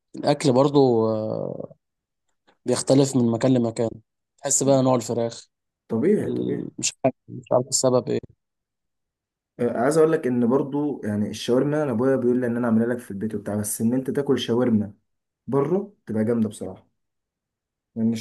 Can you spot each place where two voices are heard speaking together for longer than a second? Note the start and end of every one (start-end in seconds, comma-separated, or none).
none